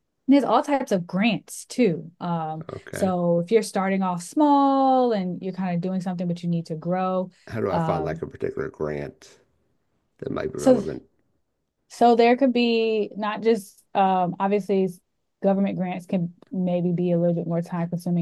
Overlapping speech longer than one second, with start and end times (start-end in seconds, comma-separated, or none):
none